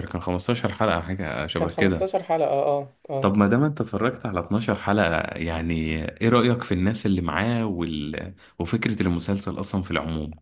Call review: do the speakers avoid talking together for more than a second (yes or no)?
yes